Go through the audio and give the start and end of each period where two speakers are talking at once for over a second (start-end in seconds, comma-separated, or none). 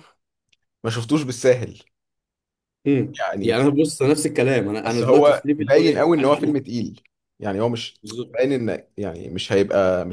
4.8-6.6